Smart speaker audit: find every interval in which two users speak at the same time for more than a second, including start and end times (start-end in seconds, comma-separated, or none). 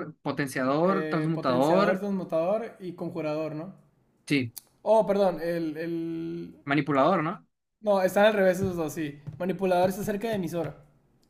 0.8-2.1